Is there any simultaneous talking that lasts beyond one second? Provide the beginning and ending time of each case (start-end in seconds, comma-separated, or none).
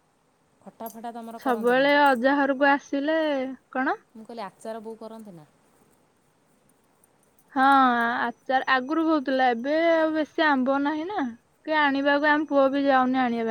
none